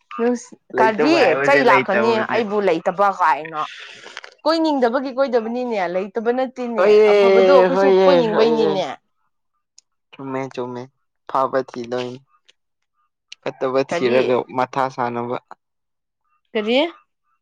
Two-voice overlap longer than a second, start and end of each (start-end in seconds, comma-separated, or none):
0.8-2.4, 6.8-8.8